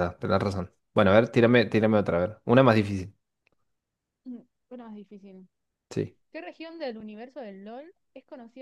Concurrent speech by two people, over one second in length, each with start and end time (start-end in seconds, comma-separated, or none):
none